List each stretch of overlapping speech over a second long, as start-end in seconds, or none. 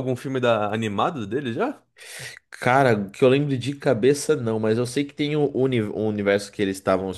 none